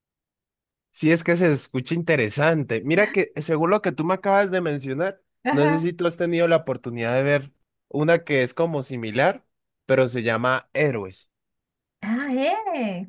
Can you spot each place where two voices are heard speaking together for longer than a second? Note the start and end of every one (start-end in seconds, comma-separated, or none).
none